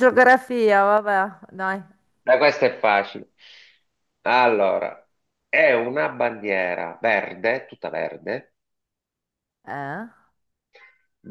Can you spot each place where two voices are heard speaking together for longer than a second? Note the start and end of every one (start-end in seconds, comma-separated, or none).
none